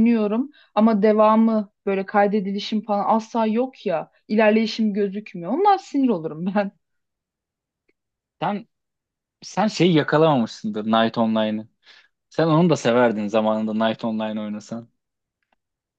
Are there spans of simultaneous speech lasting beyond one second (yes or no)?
no